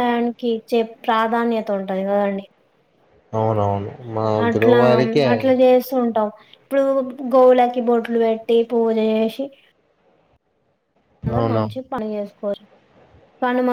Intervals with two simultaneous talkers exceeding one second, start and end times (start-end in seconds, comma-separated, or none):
none